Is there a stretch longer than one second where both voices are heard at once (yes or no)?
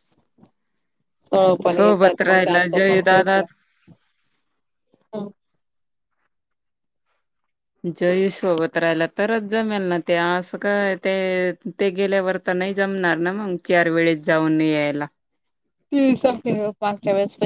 yes